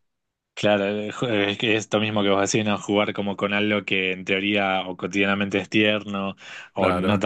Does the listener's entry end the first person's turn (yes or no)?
no